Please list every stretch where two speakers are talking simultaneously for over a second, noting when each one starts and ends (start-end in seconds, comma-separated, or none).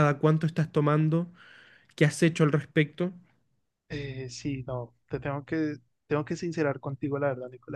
none